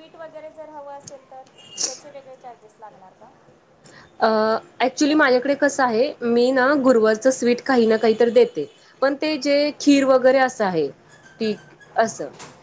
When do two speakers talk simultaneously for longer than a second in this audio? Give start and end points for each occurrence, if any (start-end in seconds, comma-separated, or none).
none